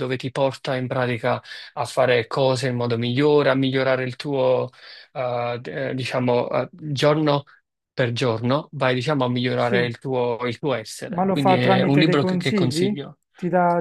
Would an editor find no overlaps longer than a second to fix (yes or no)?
no